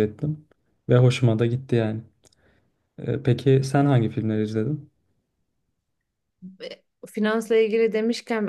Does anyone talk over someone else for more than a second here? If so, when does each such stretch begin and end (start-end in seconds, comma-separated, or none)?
none